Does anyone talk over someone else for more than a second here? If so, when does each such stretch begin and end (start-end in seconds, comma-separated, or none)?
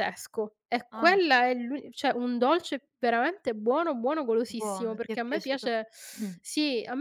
4.5-5.7